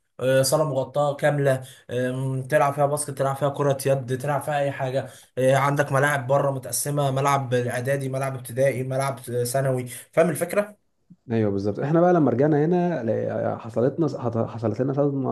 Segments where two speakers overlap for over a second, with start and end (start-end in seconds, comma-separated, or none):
none